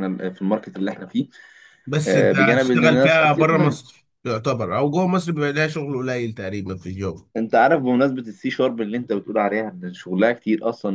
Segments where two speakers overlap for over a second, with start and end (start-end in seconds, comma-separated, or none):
2.1-3.8